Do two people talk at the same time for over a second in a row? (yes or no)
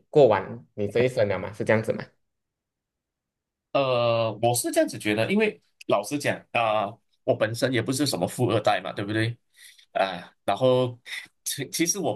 no